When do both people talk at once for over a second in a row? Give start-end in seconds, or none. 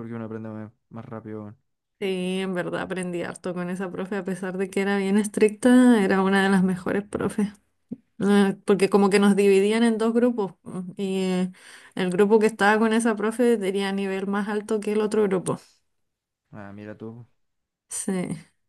none